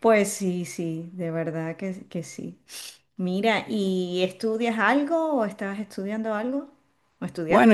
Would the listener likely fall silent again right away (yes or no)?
no